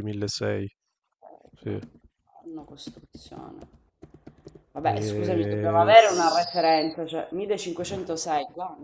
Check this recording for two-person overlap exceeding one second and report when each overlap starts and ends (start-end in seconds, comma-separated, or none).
4.8-6.9